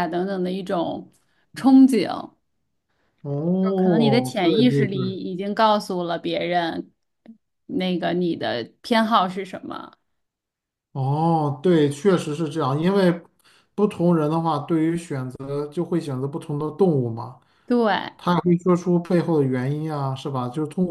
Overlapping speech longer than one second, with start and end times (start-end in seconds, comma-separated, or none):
3.6-5.2